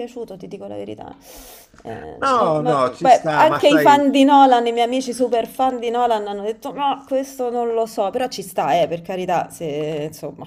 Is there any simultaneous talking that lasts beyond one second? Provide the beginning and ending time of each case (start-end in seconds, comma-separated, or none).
2.2-4.0